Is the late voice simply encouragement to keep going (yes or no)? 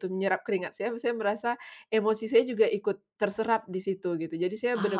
yes